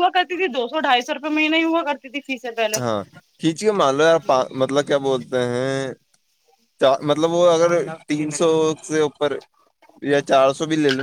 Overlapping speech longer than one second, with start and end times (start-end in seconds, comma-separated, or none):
none